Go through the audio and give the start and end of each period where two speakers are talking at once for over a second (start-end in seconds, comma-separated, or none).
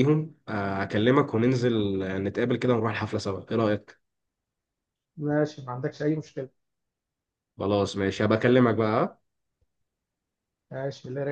none